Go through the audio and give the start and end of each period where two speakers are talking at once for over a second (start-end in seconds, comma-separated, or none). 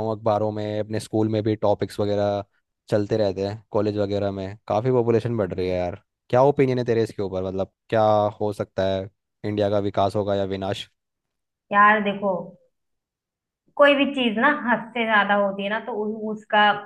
none